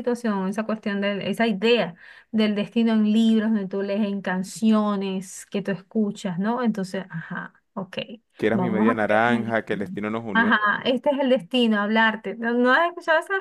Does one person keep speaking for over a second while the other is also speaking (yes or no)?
yes